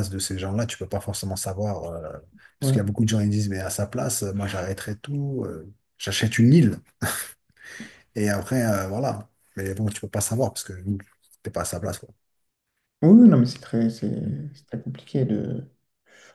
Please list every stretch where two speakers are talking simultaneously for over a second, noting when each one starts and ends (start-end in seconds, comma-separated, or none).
none